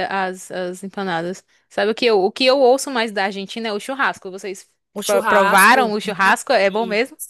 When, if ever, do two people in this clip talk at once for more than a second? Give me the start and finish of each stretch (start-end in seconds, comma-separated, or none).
5.0-6.4